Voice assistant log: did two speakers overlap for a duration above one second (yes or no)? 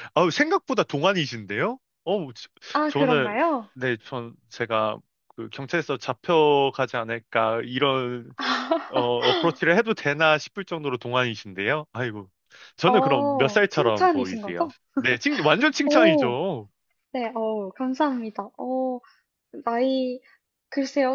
yes